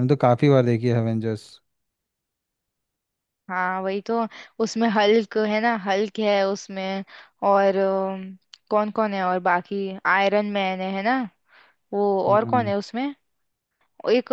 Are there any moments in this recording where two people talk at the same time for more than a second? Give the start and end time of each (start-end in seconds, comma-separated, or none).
none